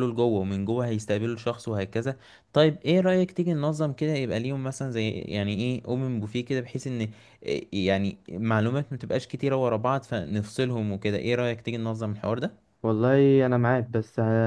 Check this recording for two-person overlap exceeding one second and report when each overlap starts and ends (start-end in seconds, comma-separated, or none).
none